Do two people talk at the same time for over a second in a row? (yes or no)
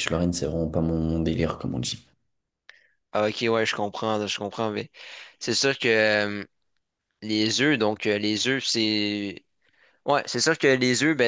no